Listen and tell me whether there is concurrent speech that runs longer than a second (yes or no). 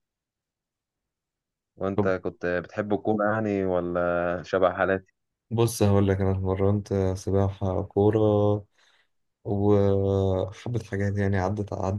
no